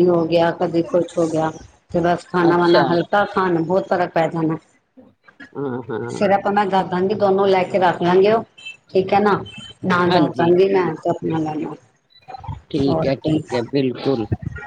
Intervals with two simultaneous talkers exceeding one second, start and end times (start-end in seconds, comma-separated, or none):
none